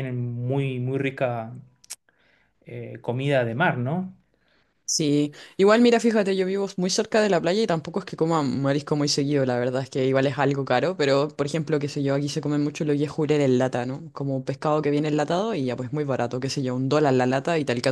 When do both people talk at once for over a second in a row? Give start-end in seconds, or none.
none